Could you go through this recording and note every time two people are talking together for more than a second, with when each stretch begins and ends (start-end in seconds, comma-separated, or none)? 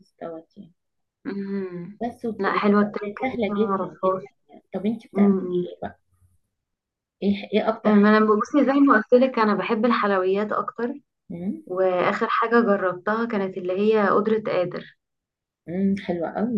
2.4-4.2